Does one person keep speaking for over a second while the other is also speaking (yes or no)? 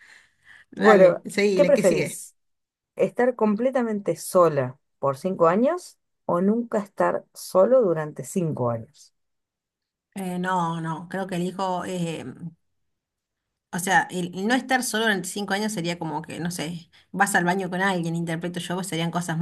yes